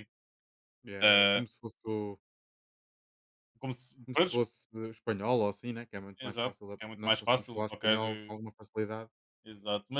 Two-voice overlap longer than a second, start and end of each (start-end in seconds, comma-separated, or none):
6.2-8.0